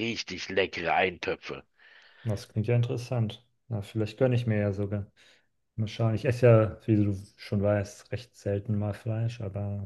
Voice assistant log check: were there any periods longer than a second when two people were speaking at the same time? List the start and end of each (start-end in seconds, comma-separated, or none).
none